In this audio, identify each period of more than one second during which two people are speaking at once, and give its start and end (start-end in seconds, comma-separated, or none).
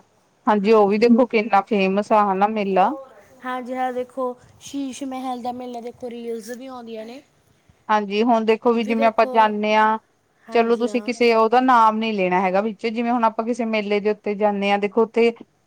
none